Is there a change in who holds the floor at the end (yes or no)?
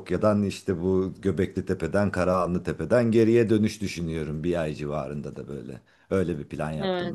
yes